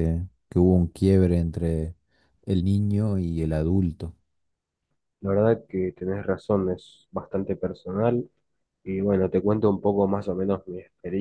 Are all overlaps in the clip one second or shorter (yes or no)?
yes